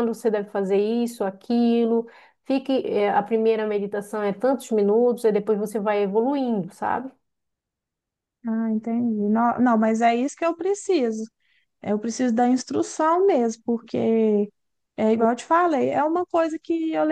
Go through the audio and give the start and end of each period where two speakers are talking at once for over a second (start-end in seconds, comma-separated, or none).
none